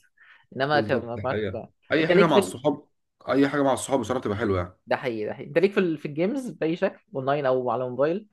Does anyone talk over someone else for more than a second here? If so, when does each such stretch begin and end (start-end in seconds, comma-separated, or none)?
0.7-2.5